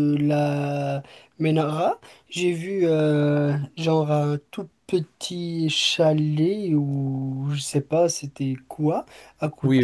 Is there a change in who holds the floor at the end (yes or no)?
yes